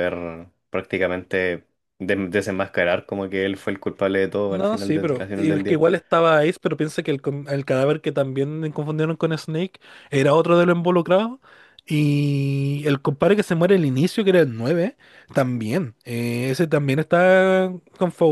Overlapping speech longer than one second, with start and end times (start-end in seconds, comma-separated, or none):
4.5-5.8